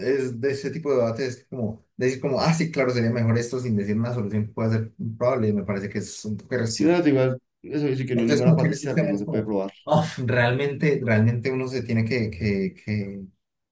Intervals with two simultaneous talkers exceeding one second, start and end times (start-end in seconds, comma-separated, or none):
8.2-9.7